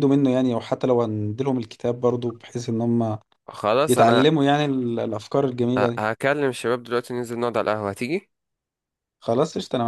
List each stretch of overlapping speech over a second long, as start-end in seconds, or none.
none